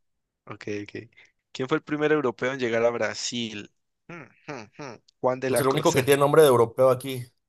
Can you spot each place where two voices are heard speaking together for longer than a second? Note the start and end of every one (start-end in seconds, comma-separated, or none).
none